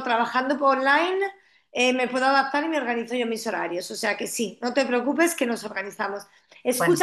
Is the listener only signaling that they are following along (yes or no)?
yes